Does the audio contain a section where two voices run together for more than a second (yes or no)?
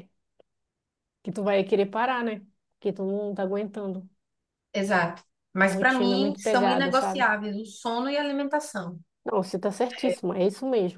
yes